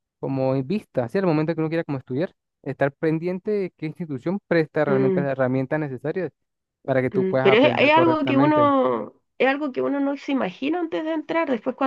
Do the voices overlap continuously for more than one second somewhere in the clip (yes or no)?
yes